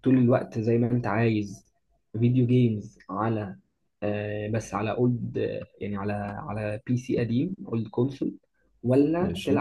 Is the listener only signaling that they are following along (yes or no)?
yes